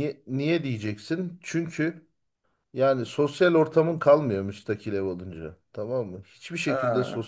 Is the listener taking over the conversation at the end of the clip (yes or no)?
no